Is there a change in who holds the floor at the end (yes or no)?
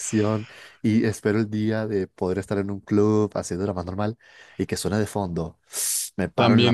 yes